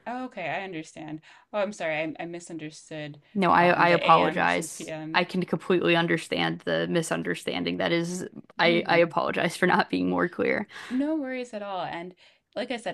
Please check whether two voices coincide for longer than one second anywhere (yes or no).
yes